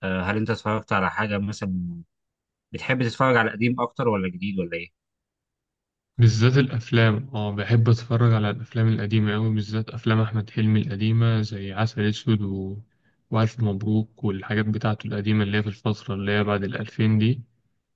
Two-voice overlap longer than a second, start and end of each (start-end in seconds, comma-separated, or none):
none